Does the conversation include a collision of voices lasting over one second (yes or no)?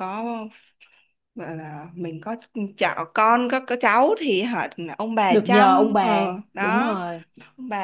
yes